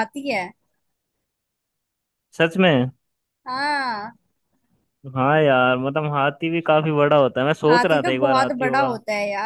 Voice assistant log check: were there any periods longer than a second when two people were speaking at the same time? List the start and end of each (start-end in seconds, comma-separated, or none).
7.7-8.9